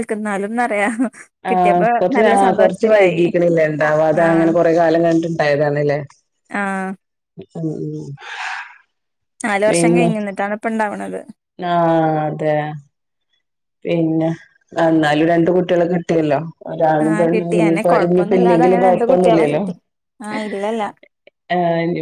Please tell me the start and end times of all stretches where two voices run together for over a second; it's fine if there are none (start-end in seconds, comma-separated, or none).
17.1-19.6